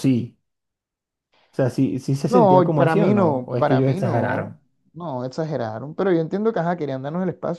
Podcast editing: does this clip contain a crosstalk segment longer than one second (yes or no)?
yes